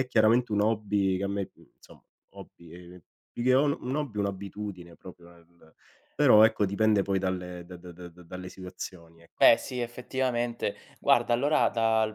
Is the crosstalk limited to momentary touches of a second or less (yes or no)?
yes